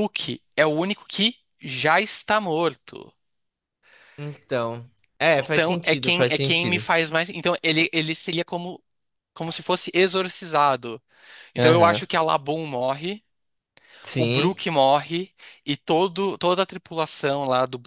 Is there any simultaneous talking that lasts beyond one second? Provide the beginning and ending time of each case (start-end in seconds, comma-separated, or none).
5.5-6.8